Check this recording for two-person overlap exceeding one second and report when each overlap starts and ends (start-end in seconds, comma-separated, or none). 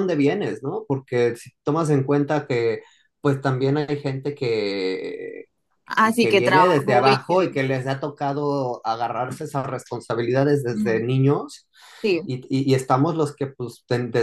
6.2-7.5